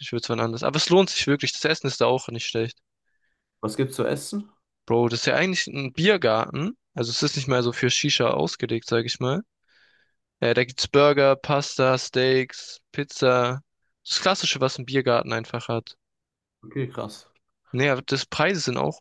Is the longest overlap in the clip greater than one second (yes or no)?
no